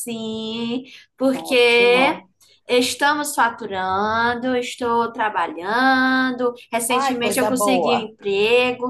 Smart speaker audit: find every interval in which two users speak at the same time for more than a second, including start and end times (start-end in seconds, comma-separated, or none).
6.9-8.1